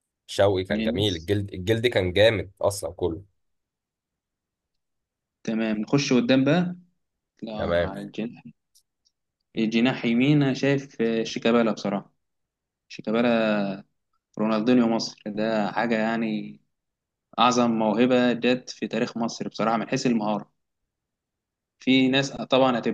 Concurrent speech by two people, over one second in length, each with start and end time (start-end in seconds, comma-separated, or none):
none